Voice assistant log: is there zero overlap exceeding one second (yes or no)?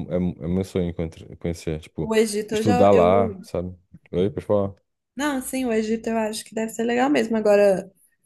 no